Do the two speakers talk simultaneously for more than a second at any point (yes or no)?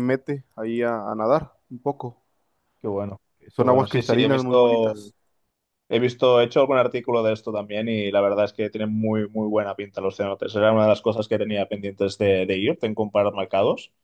yes